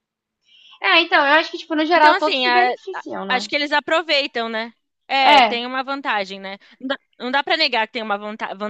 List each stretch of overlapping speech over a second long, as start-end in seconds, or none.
1.9-3.5